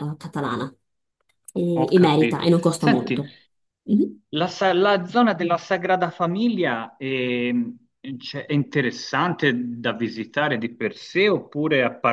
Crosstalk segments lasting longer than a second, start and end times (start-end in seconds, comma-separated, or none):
1.7-3.2